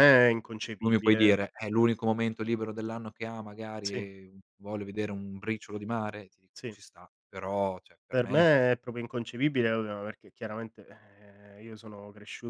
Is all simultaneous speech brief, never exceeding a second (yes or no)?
yes